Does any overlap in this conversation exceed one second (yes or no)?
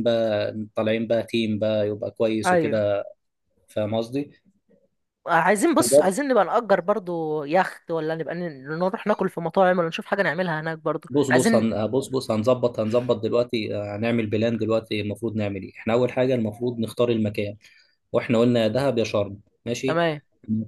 no